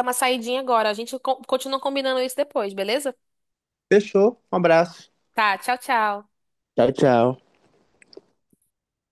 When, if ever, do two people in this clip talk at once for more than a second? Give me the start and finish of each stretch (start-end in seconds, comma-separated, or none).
none